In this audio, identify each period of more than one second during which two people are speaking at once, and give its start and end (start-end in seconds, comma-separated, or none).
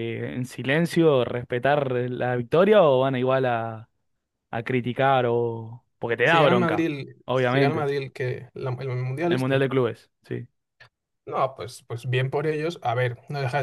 6.2-7.9